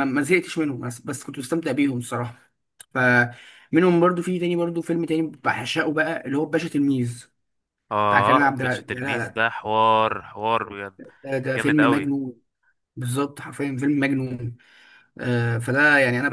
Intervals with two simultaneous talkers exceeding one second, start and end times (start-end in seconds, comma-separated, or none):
8.1-9.4